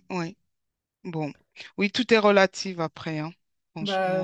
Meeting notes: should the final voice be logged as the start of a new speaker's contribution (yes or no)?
yes